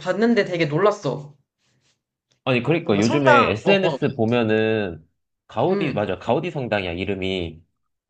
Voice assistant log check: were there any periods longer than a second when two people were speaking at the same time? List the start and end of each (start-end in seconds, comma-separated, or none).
2.8-4.0